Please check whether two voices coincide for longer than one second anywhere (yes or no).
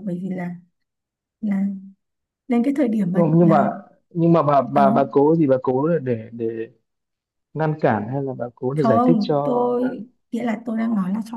yes